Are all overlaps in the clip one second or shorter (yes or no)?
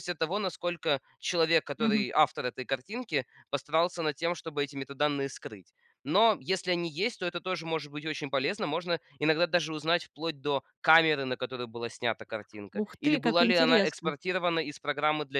no